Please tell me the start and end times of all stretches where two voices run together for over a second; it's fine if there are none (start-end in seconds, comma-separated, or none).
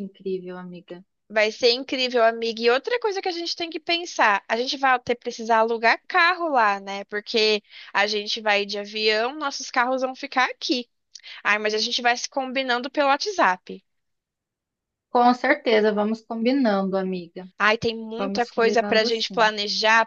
18.2-19.5